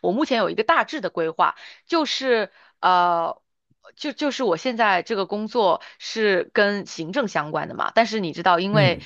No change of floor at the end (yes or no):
yes